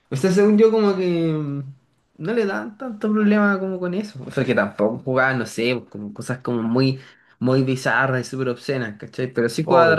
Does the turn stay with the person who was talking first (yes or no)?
yes